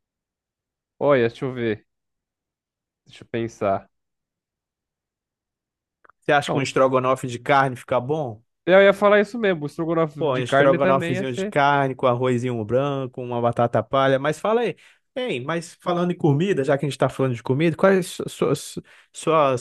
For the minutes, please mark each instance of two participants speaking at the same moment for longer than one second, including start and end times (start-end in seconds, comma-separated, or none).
10.2-11.6